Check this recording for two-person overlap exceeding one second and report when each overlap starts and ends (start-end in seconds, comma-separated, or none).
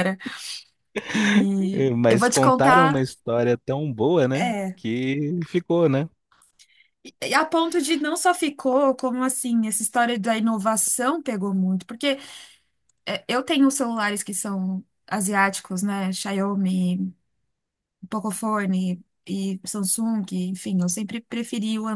1.7-3.0